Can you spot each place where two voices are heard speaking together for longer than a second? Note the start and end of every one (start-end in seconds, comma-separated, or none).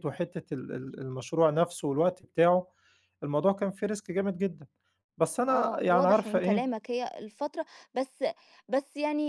5.5-6.7